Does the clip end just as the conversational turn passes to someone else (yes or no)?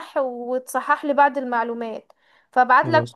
no